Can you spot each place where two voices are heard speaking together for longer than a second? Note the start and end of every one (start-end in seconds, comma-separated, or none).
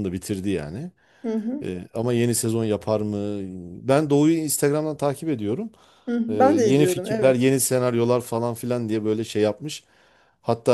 6.3-7.5